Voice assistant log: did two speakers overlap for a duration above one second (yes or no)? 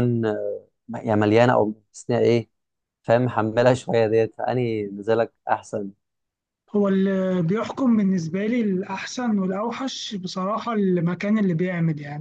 no